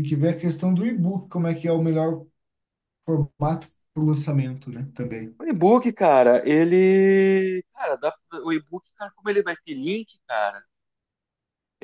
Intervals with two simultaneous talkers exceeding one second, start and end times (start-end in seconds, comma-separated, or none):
none